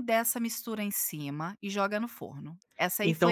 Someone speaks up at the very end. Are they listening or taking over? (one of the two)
taking over